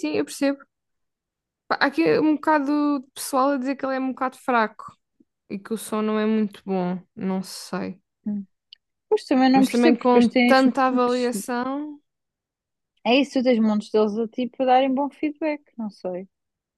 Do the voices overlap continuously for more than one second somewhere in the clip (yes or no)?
yes